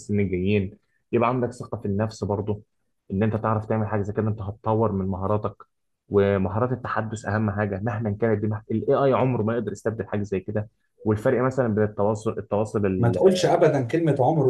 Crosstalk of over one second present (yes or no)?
no